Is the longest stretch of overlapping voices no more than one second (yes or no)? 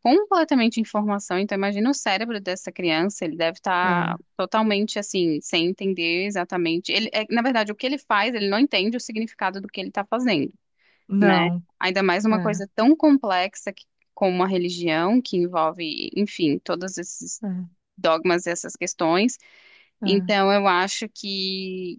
yes